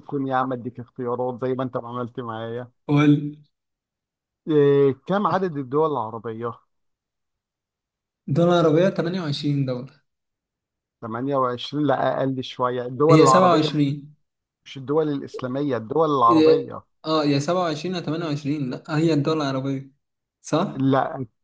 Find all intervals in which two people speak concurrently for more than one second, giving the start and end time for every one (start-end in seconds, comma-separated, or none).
none